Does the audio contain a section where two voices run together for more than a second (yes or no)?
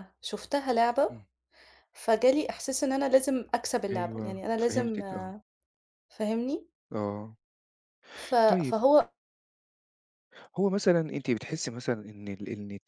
yes